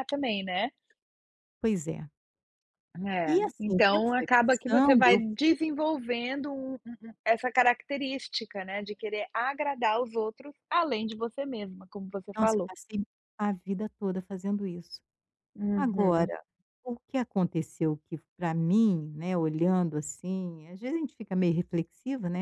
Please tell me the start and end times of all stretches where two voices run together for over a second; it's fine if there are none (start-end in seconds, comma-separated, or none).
3.2-5.6